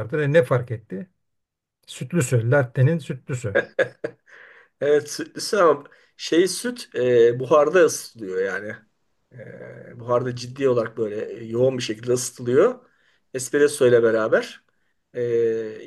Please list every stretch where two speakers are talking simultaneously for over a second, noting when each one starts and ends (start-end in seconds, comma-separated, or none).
none